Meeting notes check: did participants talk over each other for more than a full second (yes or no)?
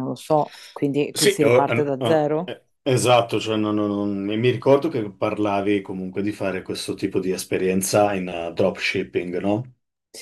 yes